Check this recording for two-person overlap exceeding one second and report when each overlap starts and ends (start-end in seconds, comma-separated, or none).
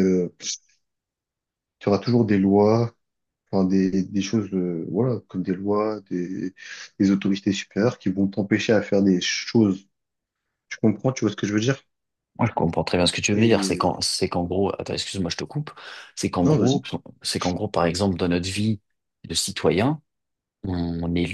none